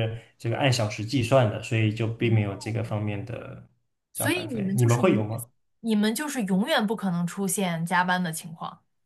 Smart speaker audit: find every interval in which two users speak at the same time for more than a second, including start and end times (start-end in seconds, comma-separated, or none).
4.2-5.4